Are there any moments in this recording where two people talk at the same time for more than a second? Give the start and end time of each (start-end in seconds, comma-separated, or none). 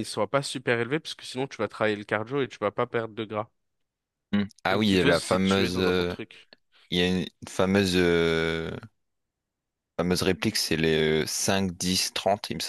4.7-6.1